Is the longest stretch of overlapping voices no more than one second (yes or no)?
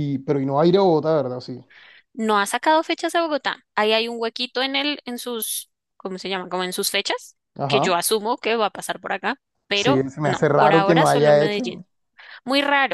no